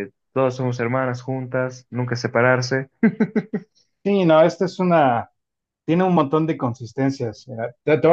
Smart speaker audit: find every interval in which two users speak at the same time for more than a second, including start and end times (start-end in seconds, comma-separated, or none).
none